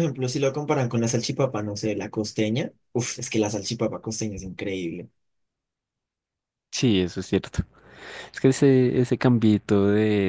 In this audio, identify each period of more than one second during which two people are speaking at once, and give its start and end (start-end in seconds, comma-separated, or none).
none